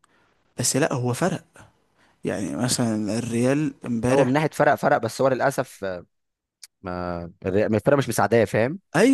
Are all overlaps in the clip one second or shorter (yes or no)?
yes